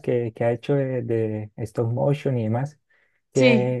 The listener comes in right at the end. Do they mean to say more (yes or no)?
no